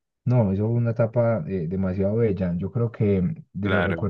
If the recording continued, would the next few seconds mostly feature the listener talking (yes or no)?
no